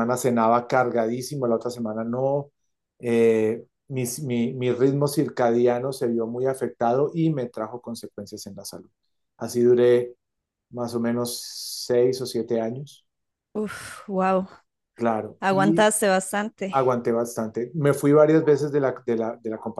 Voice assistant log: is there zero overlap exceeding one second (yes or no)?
yes